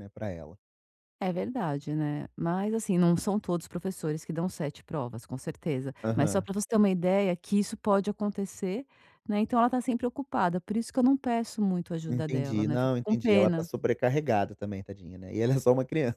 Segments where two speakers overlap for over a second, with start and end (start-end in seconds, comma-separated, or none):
12.1-13.7